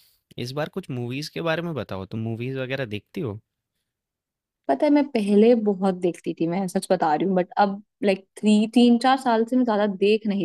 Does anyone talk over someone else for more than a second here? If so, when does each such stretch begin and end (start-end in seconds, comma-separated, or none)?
none